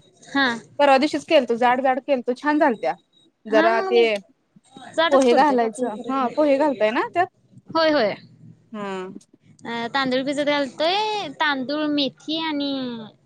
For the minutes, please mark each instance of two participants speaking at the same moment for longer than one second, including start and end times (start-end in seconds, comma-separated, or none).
5.1-6.5